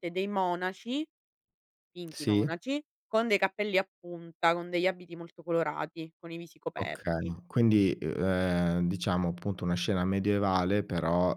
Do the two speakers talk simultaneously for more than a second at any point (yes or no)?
no